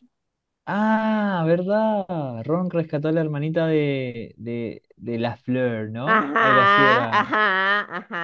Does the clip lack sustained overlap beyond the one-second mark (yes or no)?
no